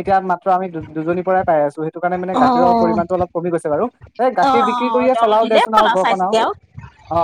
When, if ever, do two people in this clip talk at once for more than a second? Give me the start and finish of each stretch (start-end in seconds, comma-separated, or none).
4.5-6.3